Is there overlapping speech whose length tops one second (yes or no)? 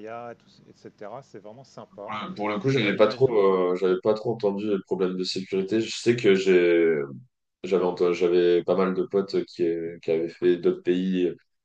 no